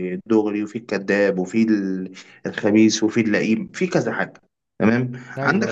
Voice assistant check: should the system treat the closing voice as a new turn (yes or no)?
no